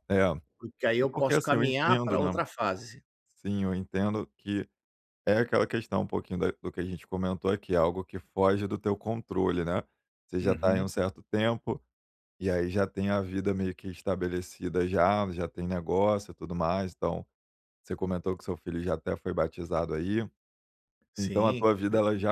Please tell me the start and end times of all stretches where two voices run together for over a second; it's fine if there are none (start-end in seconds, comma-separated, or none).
1.0-2.4